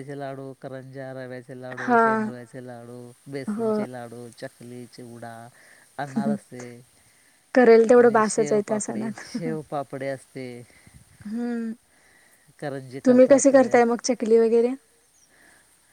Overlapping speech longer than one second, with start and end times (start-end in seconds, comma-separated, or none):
8.0-9.5